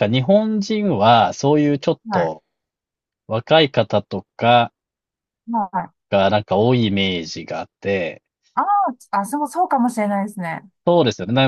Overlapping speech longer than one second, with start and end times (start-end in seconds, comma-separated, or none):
none